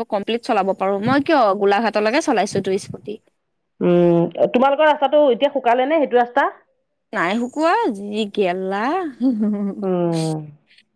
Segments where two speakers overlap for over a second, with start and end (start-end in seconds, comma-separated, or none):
none